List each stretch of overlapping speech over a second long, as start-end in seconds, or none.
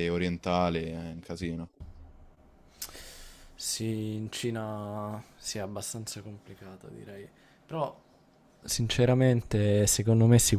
none